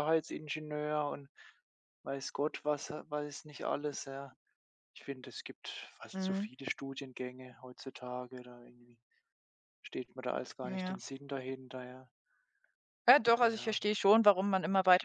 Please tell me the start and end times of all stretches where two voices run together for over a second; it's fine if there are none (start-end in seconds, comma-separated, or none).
none